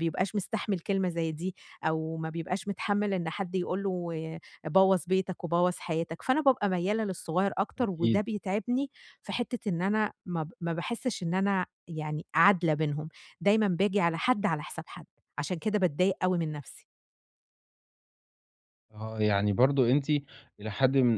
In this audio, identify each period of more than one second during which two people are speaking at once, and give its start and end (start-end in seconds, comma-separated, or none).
none